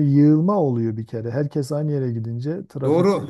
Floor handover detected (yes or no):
yes